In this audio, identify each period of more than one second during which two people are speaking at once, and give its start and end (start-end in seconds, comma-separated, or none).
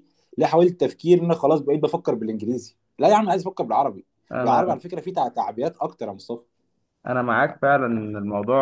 none